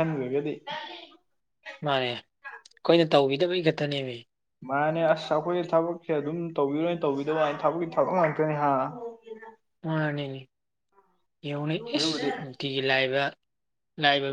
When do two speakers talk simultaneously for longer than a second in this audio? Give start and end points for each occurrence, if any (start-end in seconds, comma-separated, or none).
none